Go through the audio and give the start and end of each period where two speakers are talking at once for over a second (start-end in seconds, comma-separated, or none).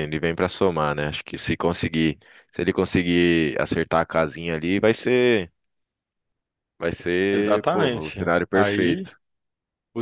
7.3-9.1